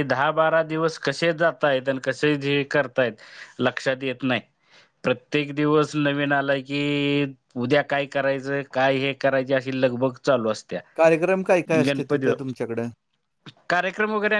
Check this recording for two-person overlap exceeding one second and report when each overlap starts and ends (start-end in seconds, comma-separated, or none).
10.9-12.3